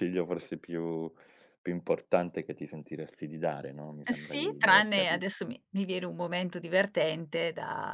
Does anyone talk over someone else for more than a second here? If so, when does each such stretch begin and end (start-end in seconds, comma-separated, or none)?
4.1-5.3